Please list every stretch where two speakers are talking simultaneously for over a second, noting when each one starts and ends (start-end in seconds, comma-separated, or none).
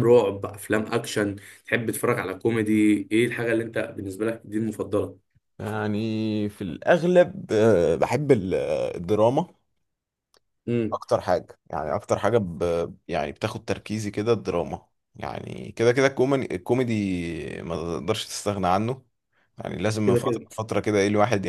none